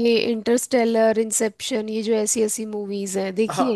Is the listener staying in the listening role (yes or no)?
no